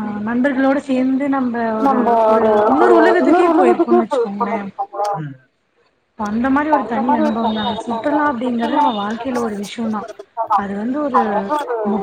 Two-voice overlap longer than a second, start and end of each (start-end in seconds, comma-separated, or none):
7.7-9.4